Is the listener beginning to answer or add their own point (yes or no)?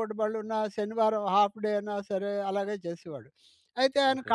no